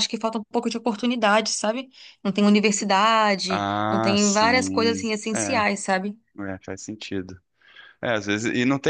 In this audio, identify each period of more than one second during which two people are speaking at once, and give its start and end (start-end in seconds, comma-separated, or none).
3.5-5.6